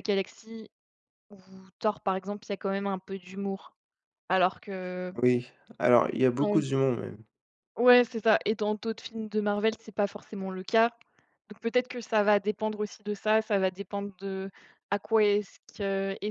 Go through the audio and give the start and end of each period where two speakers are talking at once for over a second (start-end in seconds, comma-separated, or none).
none